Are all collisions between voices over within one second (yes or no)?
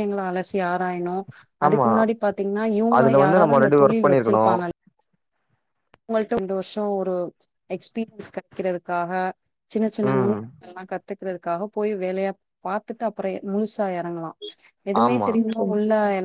no